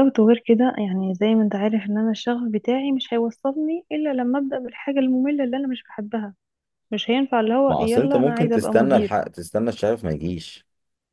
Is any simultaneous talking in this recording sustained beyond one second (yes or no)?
yes